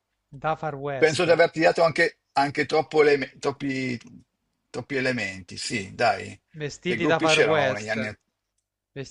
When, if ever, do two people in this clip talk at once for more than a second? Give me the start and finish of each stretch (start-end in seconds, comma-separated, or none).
6.8-8.1